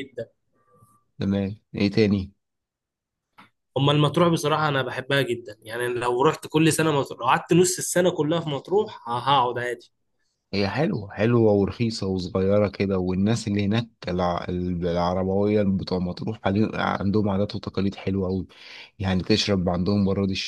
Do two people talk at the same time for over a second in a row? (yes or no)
no